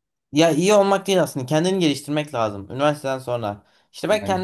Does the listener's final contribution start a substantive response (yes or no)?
no